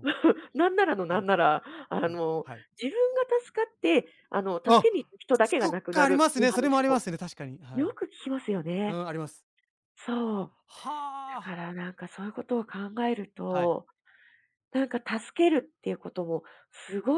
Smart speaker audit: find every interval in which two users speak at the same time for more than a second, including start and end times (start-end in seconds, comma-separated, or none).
5.6-7.0